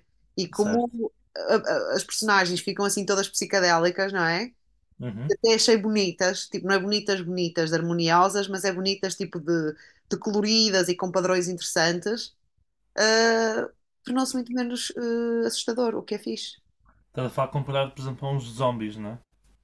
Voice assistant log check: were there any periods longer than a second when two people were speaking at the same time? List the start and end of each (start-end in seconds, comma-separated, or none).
none